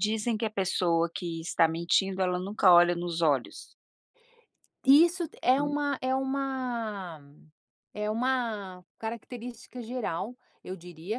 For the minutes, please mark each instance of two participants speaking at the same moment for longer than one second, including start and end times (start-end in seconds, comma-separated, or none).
none